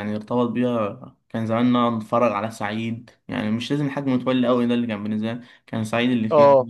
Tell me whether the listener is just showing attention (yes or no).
yes